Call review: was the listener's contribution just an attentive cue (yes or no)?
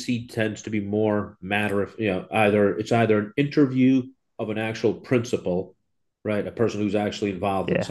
yes